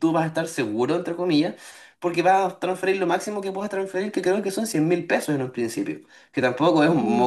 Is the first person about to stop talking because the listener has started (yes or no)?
yes